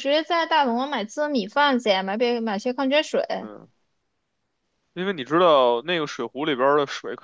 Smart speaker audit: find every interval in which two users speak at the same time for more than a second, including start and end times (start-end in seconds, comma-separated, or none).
none